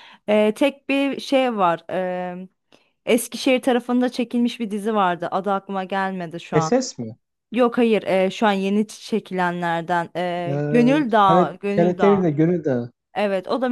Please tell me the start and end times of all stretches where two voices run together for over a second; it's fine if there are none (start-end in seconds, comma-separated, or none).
10.5-12.3